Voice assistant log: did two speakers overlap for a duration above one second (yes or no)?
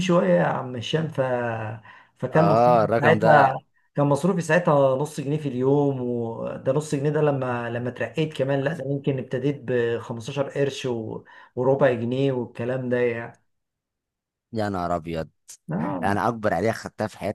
yes